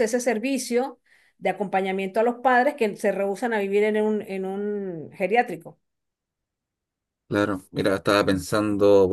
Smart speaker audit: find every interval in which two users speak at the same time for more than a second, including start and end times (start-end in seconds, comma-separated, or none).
none